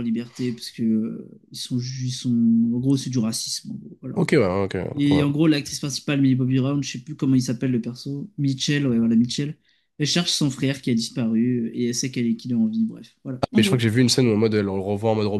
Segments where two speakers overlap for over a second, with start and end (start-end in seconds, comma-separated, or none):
none